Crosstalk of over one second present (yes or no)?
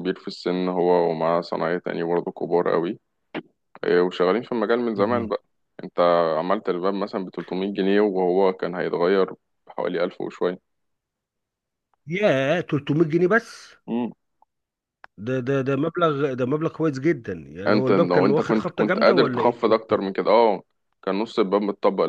yes